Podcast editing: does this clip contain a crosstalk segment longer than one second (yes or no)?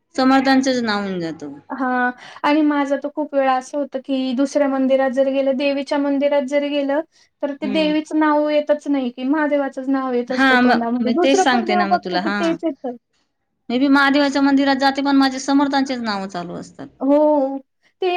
yes